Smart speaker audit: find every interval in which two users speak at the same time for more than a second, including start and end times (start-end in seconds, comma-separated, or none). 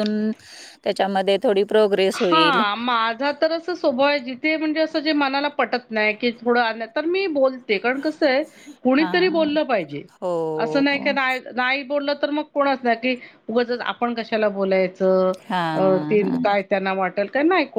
none